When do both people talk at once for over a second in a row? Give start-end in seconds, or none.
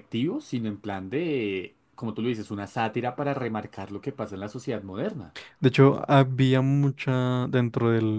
none